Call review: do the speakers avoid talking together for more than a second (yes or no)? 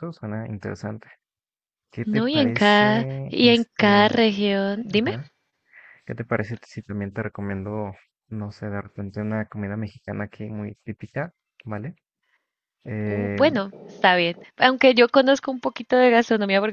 no